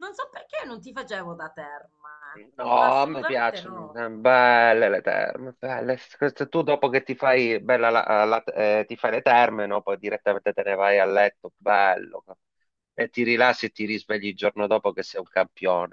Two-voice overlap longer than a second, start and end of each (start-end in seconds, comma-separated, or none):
2.6-4.0